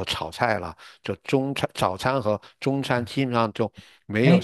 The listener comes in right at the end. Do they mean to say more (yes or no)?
yes